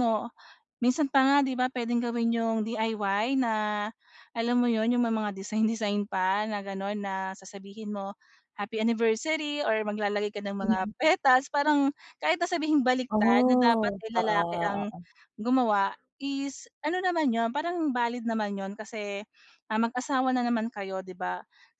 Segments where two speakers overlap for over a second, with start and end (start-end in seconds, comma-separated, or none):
13.1-14.9